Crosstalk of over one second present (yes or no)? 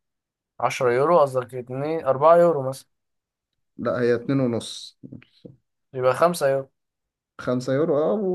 no